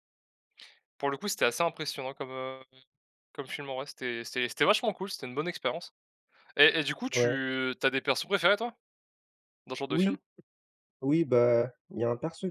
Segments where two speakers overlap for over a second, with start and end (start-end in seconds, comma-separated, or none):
none